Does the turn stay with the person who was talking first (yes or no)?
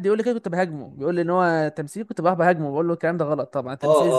no